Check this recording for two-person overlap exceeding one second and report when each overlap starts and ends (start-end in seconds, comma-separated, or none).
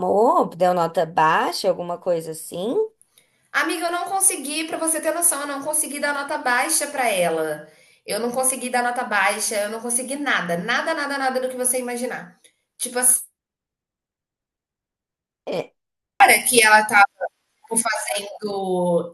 none